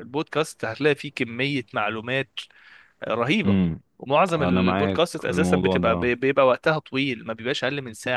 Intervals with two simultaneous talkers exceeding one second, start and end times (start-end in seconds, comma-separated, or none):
4.3-6.1